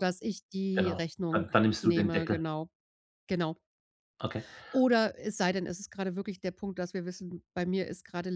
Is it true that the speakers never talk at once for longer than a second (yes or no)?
no